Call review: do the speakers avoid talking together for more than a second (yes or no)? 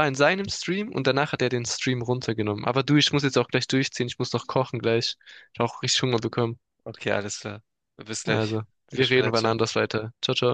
no